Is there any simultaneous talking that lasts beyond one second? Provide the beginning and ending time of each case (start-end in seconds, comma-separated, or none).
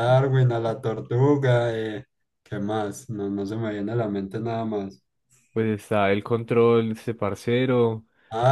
none